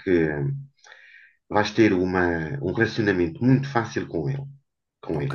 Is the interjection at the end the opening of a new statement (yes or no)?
yes